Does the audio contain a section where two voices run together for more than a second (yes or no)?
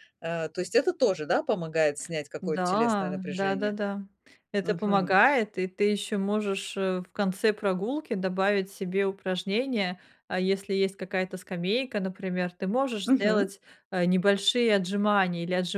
yes